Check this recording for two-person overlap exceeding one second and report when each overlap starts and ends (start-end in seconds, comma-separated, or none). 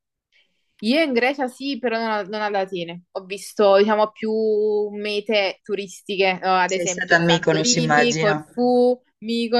6.7-8.6